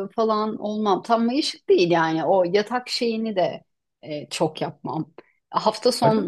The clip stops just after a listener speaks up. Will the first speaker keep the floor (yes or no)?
yes